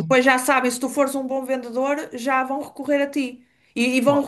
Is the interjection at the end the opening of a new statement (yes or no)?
no